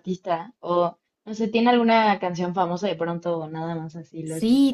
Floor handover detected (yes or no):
yes